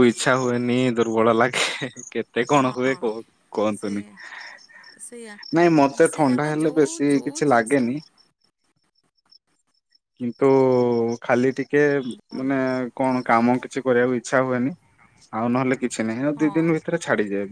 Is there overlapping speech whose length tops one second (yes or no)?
yes